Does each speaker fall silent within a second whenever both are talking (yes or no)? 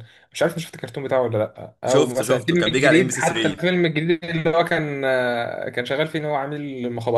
no